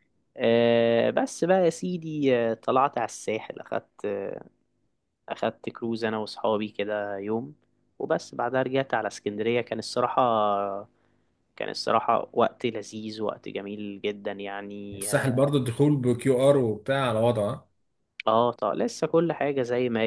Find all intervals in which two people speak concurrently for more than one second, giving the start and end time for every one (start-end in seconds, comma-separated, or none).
none